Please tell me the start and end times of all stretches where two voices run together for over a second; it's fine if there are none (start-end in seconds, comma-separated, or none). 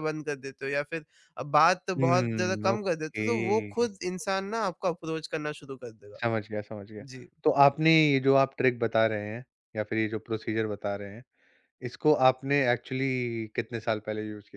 2.0-3.3